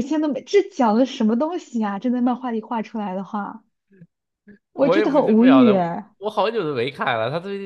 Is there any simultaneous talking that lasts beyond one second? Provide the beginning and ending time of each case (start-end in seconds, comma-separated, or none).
4.8-6.1